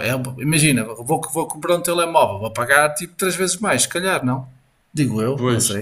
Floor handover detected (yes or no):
yes